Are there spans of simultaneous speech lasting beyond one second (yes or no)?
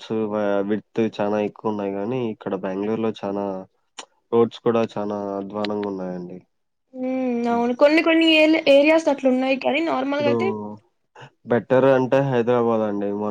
no